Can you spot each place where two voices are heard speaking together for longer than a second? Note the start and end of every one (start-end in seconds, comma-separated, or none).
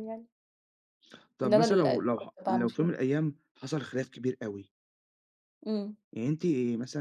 1.4-2.9